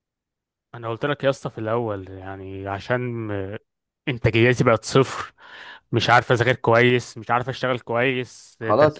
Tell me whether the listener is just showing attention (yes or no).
no